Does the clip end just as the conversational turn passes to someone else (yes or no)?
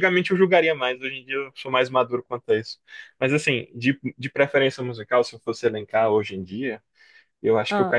no